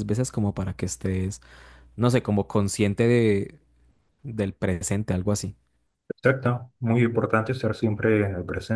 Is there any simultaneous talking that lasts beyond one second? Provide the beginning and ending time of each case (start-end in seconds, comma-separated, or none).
none